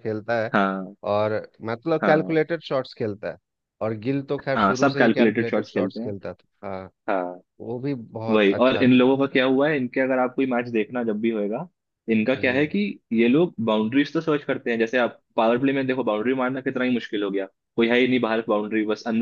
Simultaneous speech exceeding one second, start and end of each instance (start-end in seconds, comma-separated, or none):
4.5-6.1